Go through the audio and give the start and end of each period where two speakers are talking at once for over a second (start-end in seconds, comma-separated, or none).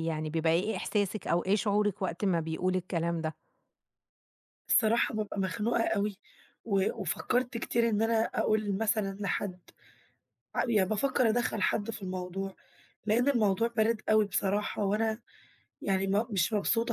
none